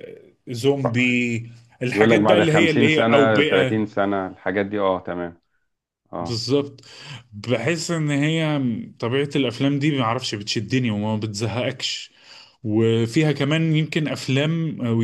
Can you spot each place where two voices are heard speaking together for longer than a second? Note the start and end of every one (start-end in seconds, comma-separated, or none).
1.9-3.8